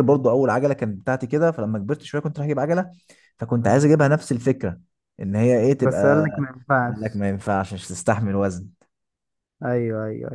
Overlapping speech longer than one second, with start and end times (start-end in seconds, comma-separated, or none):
none